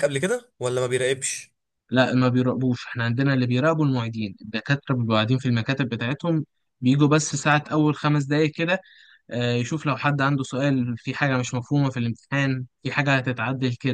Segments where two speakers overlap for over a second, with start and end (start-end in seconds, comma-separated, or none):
none